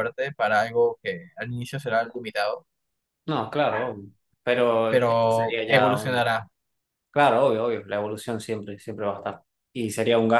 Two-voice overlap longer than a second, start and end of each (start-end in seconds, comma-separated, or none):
4.9-6.3